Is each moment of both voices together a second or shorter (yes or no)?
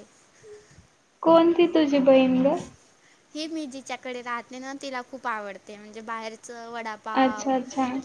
yes